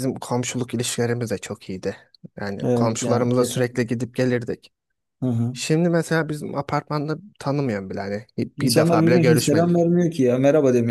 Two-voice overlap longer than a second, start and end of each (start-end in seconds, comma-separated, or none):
2.6-3.9, 8.6-9.9